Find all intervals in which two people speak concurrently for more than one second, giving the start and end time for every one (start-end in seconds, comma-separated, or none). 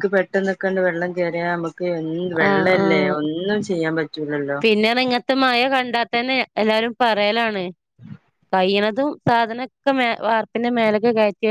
none